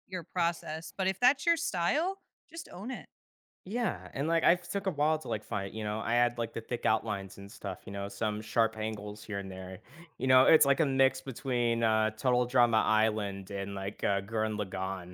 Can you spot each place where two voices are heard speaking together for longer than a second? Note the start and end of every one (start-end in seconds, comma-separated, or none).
none